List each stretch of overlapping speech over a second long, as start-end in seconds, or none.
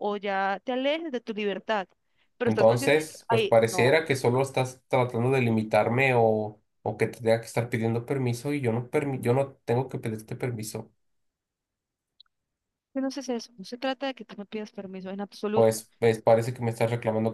2.5-4.0